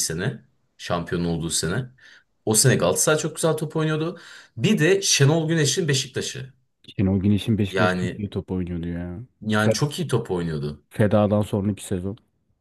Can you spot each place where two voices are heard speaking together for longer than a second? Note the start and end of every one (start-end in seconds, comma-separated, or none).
none